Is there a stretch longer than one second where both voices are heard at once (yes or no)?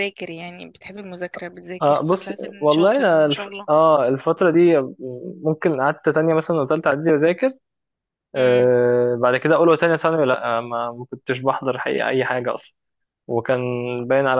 yes